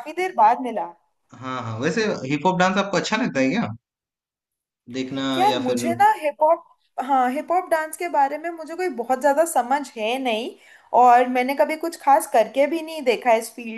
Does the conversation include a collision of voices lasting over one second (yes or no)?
no